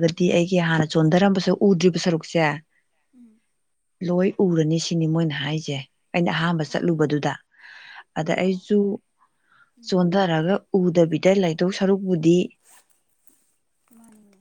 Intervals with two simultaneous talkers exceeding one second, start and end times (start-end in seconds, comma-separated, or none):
none